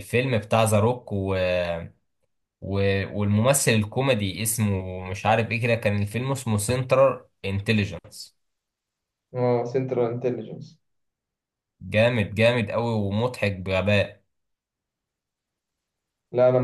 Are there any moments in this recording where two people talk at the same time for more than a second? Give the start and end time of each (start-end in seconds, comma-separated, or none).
none